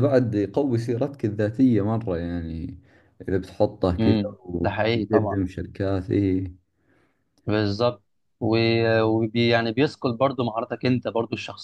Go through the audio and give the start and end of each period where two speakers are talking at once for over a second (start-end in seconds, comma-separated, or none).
4.0-5.4